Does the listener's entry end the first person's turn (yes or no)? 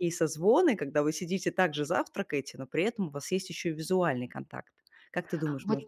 yes